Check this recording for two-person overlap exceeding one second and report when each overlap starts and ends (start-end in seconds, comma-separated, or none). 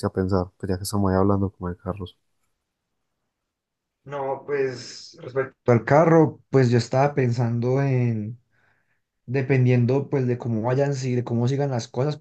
none